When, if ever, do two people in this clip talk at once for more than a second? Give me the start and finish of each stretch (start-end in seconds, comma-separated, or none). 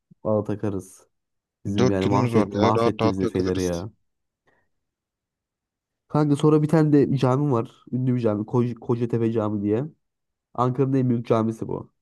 1.8-3.8